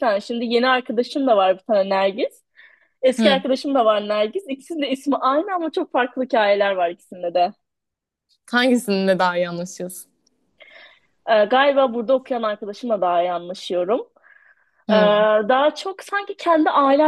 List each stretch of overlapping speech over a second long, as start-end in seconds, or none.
none